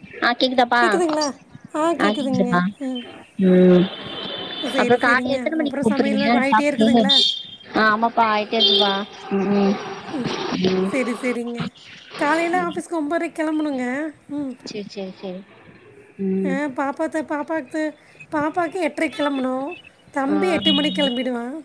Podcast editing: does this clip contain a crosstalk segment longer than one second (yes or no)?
yes